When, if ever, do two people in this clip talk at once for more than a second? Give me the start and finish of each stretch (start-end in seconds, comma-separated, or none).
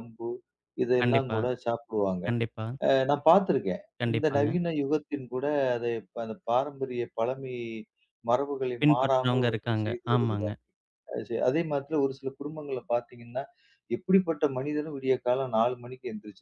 8.8-10.6